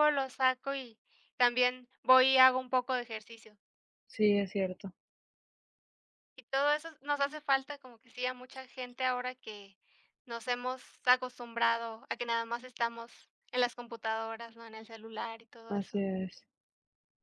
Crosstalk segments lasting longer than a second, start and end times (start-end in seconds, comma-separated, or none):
none